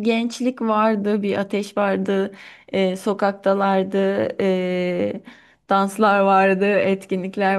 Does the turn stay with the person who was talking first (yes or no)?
yes